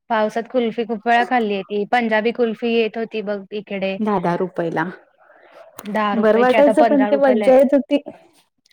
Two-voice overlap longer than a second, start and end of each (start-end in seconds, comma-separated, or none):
6.2-7.5